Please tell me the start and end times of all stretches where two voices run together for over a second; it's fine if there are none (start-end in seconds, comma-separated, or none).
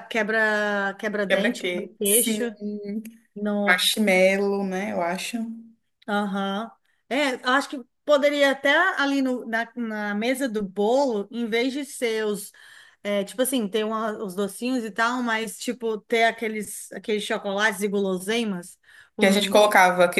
1.3-2.5